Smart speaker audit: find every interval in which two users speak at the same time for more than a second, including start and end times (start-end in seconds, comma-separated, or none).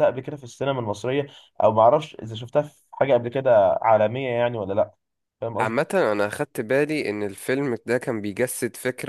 none